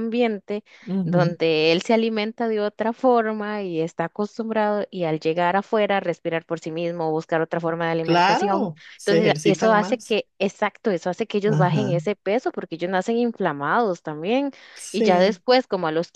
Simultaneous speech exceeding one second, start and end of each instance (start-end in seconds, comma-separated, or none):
8.0-10.2